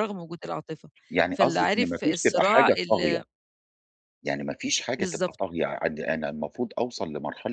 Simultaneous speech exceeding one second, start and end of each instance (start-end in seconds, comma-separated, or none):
1.3-3.2